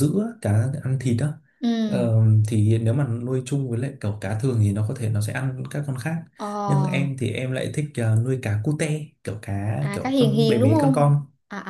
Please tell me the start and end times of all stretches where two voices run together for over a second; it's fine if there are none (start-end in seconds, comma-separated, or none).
9.8-11.1